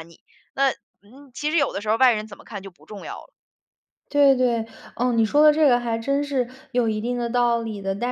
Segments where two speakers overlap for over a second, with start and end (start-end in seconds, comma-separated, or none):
none